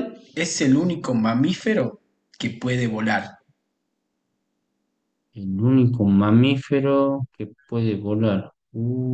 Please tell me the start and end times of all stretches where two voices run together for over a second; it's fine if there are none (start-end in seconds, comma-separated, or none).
none